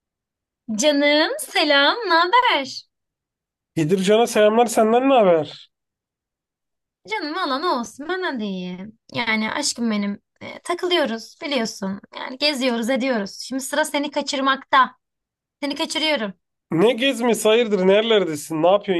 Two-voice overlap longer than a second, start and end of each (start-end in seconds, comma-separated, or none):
none